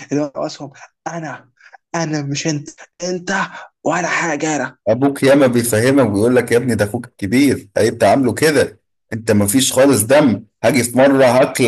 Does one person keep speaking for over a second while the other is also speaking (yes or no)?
no